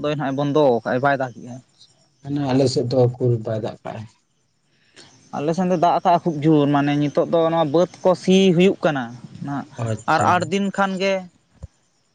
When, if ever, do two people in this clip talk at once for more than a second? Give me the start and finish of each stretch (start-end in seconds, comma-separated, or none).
none